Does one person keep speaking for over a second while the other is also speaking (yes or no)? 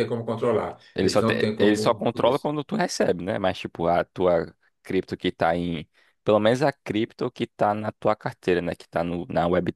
yes